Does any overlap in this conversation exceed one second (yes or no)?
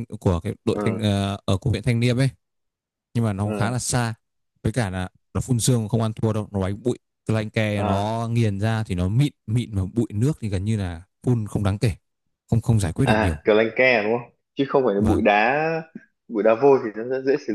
no